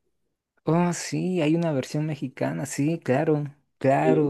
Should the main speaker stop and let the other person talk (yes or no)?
yes